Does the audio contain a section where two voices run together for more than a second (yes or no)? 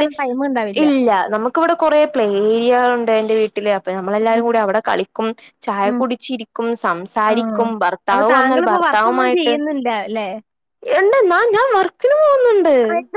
yes